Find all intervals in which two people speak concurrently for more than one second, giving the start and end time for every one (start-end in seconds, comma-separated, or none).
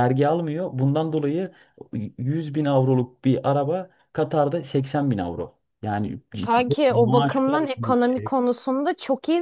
6.4-8.4